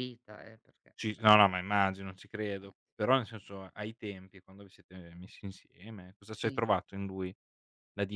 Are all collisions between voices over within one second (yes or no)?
yes